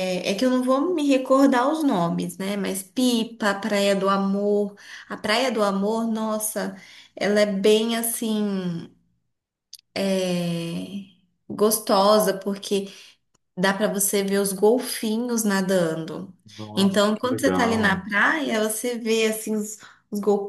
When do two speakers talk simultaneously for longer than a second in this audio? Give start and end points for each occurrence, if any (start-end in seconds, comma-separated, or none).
16.8-18.1